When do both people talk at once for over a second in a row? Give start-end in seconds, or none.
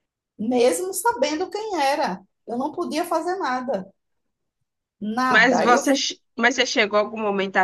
none